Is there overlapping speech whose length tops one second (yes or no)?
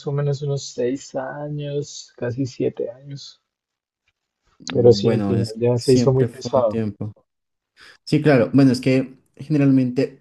yes